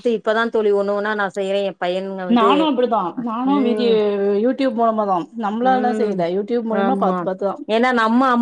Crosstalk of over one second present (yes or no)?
no